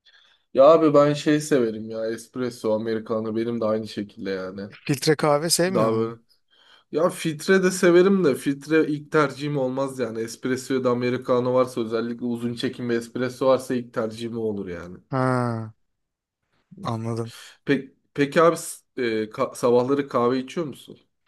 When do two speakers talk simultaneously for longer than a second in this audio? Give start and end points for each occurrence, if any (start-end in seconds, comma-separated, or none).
none